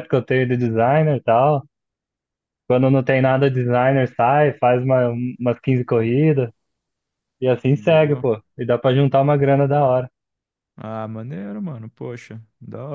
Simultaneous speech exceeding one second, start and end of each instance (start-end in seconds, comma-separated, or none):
none